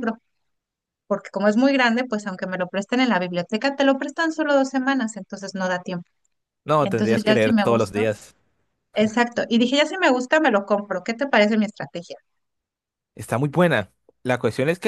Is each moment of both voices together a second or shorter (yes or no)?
no